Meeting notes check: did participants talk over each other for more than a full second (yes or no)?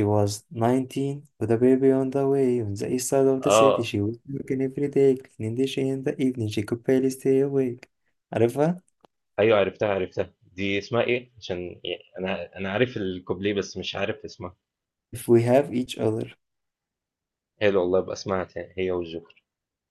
no